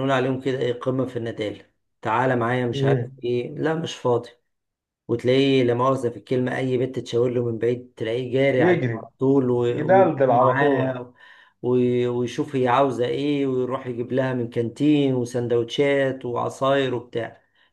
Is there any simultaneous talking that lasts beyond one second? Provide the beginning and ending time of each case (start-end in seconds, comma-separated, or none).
9.7-10.9